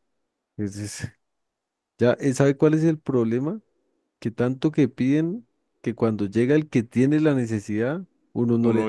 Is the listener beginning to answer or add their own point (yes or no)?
yes